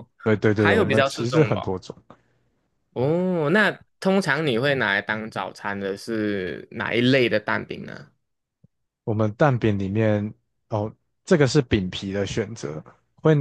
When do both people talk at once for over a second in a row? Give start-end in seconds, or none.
0.5-1.7